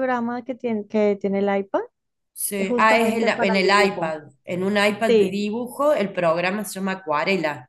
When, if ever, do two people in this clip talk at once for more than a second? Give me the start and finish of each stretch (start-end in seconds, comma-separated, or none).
2.6-4.2